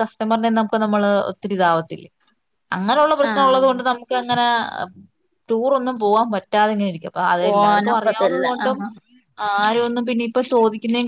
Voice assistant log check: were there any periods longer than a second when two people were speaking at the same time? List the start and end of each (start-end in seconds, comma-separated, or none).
7.4-8.8